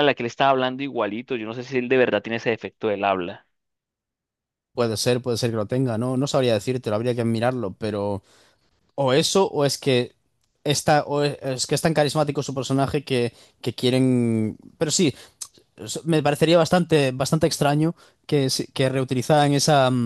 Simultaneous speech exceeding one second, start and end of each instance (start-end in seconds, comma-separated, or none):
none